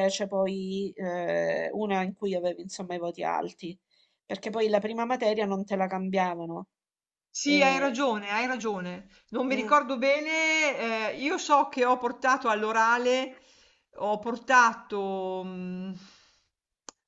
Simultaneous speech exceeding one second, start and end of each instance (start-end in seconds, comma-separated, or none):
none